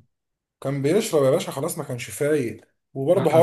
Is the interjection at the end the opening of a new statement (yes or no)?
no